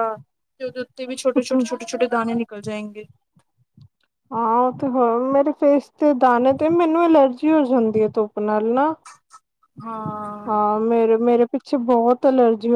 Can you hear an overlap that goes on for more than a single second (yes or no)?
no